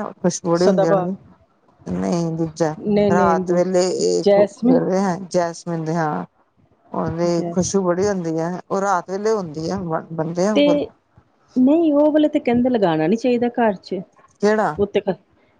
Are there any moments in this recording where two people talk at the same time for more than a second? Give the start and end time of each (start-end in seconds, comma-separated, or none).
3.1-4.8